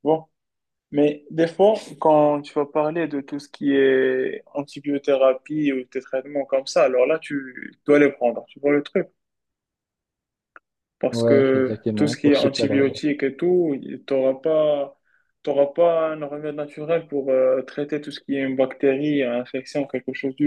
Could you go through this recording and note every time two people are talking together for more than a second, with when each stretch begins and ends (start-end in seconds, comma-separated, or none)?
11.1-12.8